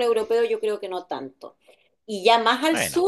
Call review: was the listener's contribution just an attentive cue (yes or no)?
yes